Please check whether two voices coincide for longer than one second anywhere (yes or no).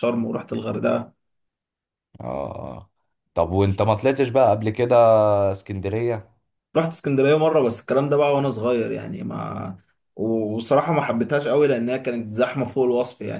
no